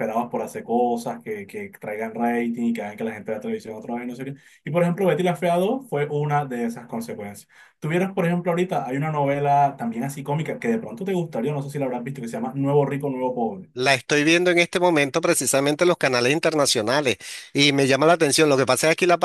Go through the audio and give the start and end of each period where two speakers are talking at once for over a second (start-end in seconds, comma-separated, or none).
none